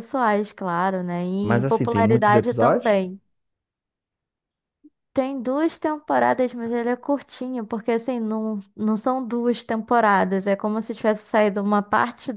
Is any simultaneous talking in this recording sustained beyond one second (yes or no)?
yes